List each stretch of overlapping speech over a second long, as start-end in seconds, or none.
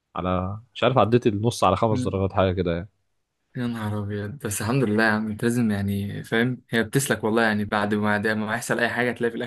none